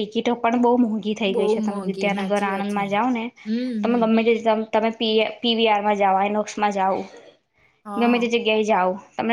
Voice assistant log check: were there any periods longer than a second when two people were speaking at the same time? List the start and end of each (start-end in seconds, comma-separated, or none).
1.3-2.8